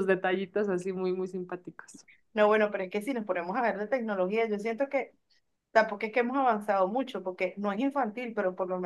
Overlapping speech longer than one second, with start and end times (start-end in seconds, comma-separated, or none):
none